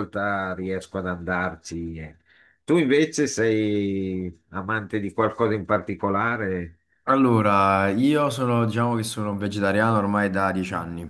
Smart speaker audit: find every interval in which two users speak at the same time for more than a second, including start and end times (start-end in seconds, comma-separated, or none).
none